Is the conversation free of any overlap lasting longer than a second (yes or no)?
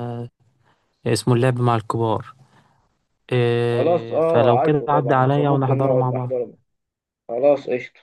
no